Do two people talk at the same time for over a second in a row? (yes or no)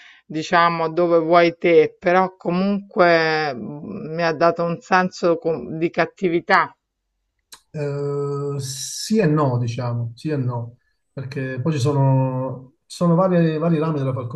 no